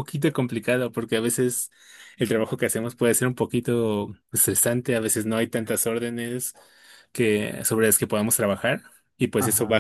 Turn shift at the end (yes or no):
no